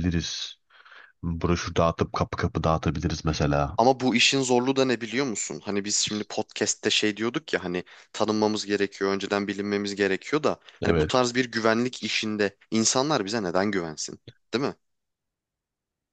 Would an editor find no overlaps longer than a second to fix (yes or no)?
yes